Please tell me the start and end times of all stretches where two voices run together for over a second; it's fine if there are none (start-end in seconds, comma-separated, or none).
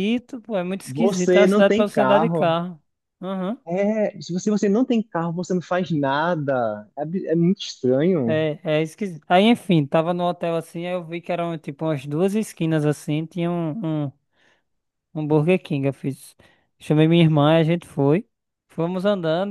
0.8-2.6